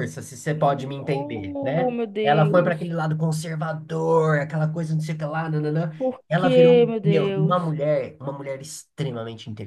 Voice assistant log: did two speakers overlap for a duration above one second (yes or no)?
yes